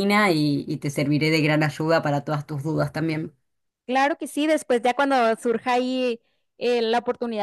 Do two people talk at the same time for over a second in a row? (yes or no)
no